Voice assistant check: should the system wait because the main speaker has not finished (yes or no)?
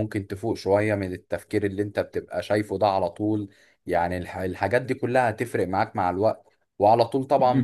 yes